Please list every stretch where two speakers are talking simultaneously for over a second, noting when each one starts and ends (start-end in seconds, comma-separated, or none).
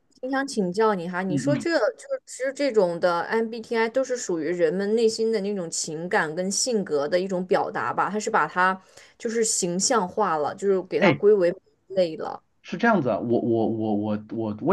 none